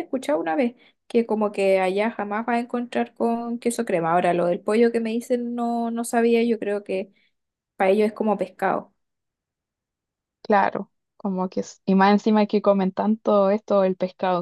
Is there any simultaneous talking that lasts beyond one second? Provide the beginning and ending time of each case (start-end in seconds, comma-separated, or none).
none